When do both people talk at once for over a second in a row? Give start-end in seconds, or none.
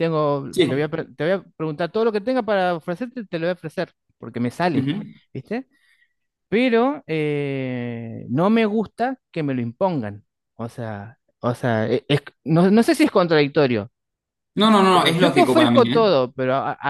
14.9-16.1